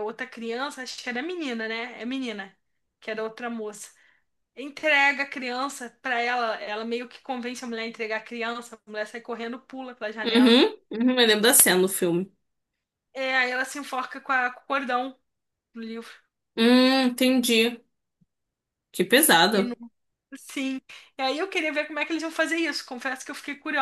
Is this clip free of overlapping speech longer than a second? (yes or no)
yes